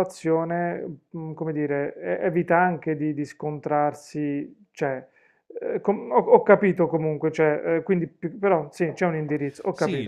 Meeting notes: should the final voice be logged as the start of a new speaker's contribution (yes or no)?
yes